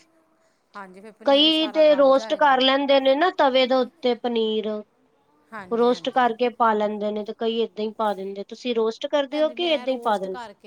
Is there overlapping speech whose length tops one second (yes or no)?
yes